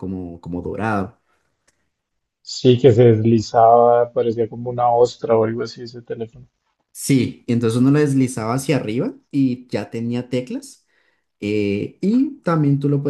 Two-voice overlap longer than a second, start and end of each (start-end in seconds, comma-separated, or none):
none